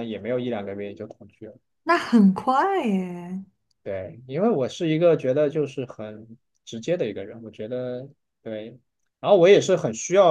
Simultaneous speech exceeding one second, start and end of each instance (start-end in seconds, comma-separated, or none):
none